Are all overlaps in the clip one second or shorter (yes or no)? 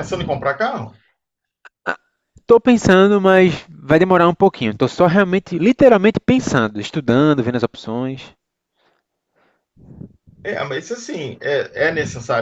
yes